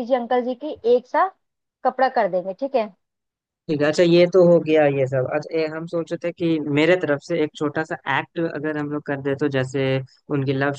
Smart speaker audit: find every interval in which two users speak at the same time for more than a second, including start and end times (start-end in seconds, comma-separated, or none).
none